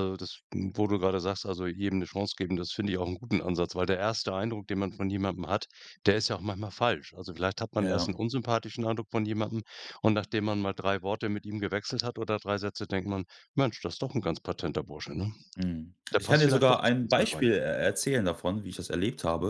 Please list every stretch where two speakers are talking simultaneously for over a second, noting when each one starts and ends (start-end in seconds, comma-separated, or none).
16.1-17.4